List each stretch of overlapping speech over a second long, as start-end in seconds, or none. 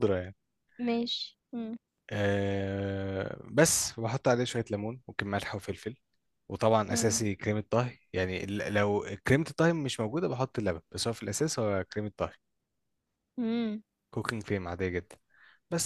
none